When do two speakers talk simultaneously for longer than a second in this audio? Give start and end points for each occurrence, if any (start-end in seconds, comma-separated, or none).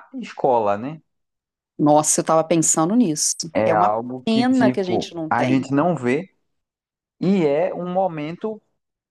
3.5-5.7